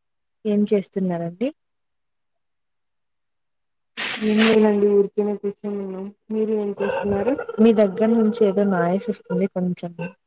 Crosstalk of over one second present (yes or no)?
no